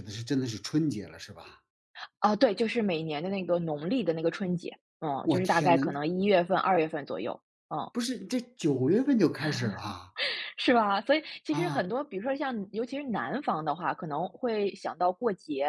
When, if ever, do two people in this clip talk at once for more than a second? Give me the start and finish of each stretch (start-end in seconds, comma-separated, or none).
none